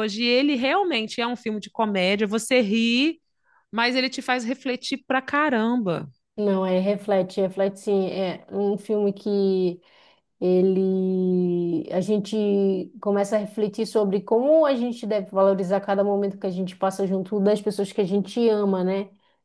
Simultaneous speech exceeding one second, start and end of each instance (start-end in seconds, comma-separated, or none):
none